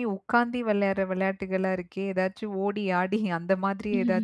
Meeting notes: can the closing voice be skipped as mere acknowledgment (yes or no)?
yes